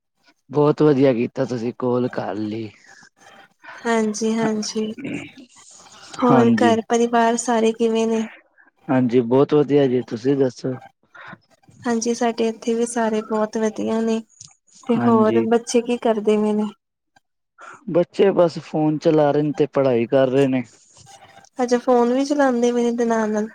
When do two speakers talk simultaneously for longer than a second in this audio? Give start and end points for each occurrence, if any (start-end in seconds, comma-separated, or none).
none